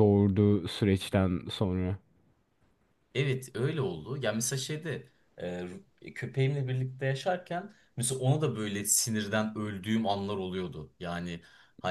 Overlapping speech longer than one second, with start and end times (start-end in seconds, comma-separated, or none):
none